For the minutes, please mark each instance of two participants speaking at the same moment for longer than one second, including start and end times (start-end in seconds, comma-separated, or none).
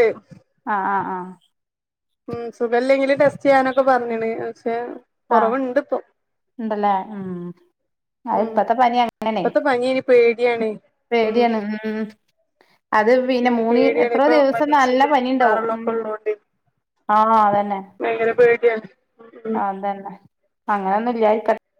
13.4-15.9